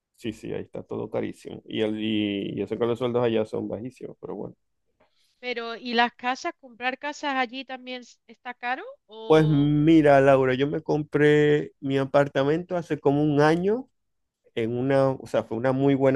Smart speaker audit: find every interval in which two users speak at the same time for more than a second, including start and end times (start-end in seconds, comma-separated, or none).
none